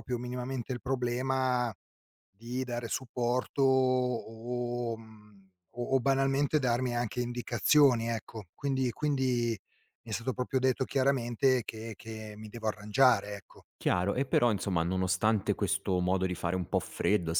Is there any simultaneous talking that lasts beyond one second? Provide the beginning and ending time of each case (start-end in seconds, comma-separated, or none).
none